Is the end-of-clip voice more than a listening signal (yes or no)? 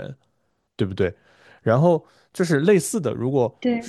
no